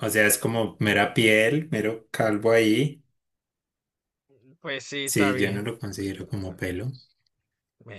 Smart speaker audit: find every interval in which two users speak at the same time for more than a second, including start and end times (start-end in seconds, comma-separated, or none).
5.0-6.6